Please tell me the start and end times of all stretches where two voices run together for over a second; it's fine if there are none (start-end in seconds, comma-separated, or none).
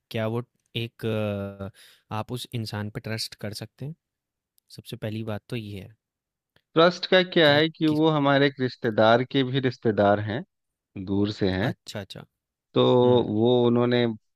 none